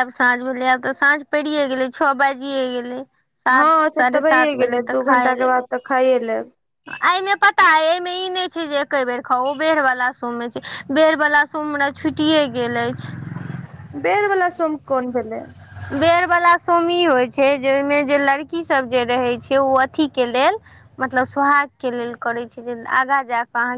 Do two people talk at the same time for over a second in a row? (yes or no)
yes